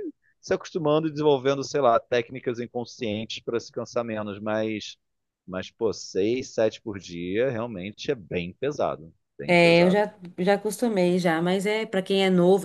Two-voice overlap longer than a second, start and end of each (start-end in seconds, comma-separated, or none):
none